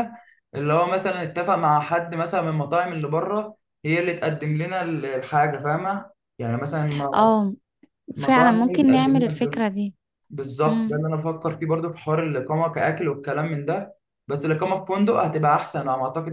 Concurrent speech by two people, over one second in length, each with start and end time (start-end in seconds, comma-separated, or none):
8.2-9.6